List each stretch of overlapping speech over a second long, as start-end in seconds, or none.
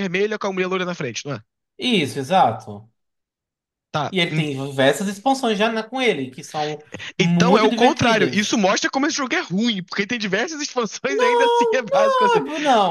7.2-8.6, 11.1-12.4